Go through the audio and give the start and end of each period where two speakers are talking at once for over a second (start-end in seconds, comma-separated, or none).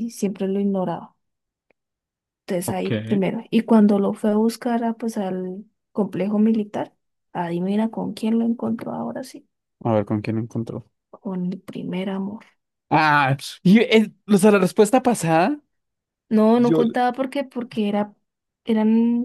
none